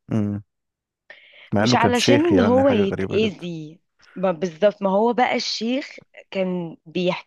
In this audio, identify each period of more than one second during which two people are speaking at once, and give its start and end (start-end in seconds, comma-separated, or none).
1.6-3.5